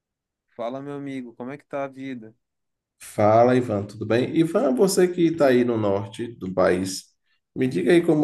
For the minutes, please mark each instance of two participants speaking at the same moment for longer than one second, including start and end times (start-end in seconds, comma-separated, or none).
none